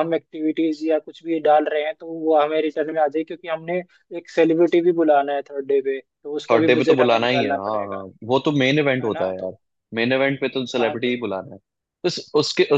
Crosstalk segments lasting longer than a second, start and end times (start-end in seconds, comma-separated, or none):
6.5-8.0